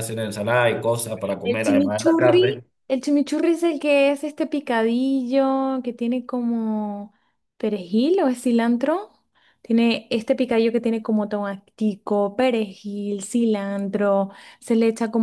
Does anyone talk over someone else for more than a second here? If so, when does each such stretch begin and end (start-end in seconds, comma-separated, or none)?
1.4-2.6